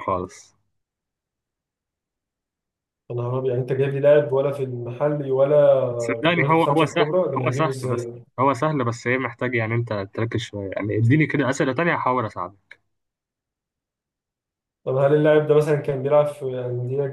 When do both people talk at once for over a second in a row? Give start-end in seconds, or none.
6.2-8.0